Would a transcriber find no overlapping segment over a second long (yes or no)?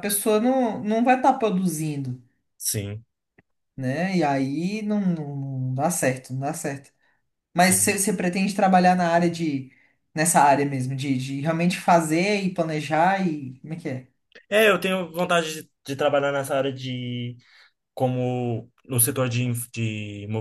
yes